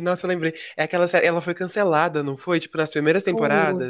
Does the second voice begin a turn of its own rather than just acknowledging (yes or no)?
yes